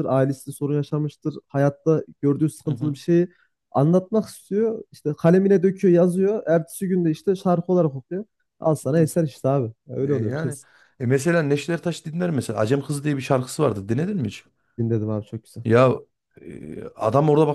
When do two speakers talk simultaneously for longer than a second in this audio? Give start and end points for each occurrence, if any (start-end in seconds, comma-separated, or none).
none